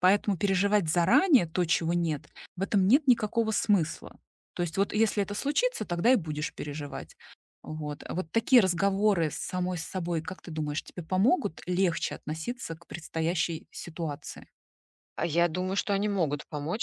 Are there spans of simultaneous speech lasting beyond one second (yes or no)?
no